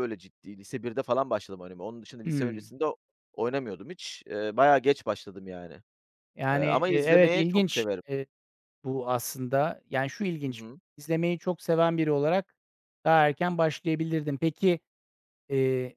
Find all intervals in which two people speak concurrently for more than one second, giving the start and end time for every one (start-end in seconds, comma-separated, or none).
6.5-8.0